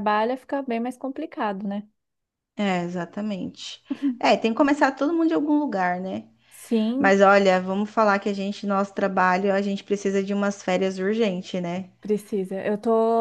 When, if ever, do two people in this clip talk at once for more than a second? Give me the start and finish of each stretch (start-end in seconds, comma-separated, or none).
none